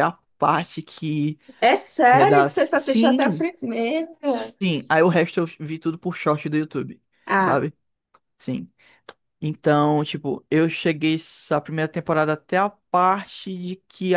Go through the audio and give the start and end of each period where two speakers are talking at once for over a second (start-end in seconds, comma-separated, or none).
2.1-3.5